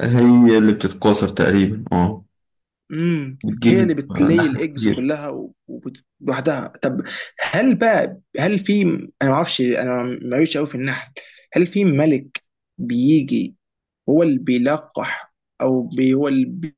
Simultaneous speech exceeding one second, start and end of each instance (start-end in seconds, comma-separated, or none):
3.4-5.1